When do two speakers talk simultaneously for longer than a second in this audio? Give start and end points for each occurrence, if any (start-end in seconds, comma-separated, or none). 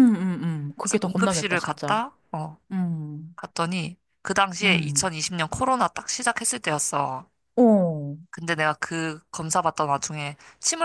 0.8-2.0